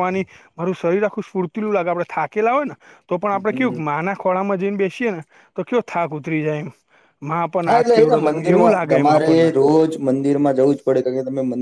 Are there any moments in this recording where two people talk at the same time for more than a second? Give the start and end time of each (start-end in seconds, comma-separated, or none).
7.7-9.4